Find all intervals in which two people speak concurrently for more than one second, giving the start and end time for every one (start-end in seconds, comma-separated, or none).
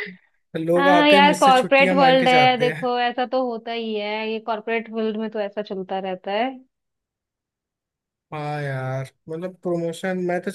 0.8-2.9